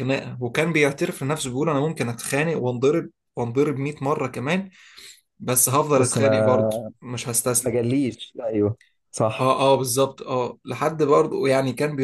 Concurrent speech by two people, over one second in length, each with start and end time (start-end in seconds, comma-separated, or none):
none